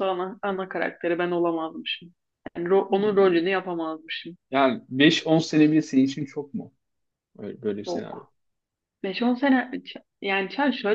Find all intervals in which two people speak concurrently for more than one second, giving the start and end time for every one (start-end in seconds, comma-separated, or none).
none